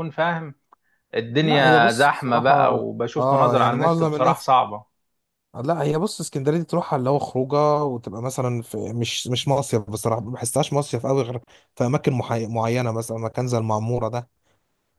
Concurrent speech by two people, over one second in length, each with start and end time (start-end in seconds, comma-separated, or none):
1.4-4.5